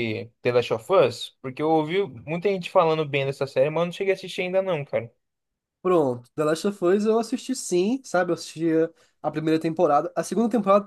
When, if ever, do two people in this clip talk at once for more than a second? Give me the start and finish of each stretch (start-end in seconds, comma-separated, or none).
none